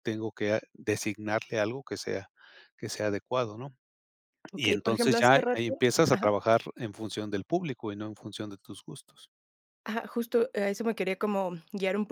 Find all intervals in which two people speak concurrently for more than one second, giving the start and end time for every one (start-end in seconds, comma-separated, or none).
4.5-6.3